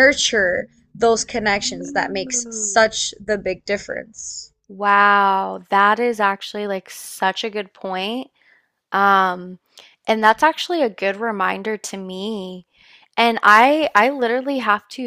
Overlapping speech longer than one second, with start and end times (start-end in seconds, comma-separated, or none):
1.6-2.8